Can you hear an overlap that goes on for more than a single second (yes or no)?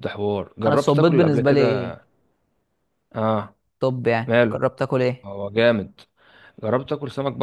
yes